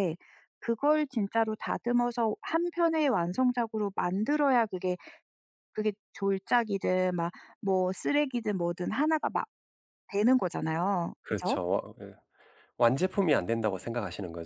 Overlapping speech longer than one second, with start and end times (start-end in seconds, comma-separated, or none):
none